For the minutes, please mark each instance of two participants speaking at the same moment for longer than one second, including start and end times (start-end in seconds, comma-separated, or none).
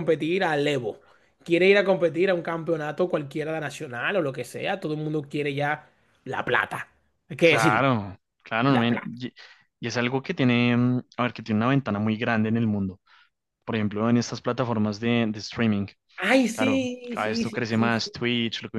16.6-18.0